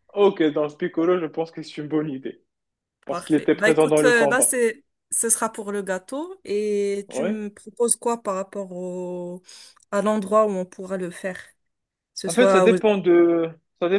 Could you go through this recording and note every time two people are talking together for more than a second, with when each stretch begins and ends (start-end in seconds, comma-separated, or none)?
3.1-4.5